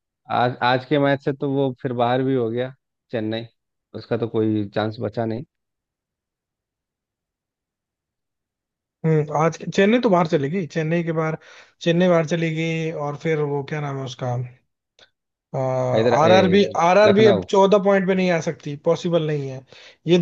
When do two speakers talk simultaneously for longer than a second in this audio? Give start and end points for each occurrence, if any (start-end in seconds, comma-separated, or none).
none